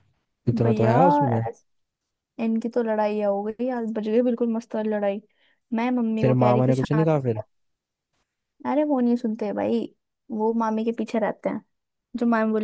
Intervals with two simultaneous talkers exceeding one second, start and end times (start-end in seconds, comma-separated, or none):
6.2-7.4